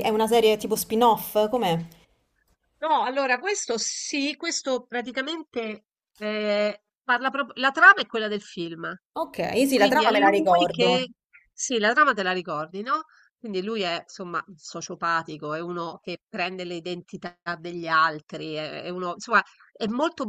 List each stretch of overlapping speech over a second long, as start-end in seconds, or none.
9.7-11.1